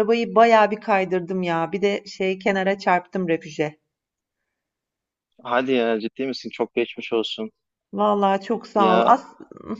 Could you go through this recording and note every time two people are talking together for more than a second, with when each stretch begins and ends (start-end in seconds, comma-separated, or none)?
none